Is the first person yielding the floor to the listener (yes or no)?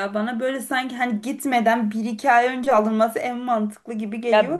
yes